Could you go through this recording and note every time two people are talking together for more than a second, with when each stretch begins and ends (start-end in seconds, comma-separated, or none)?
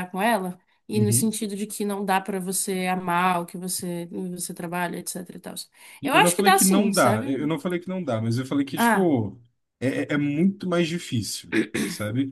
6.0-7.3